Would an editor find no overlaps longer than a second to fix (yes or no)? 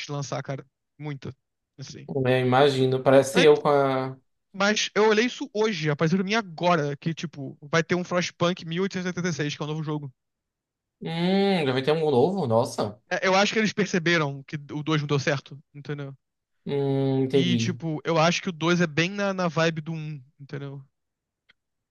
yes